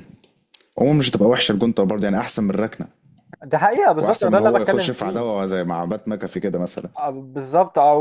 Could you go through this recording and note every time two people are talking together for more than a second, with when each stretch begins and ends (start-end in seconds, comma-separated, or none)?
4.0-5.3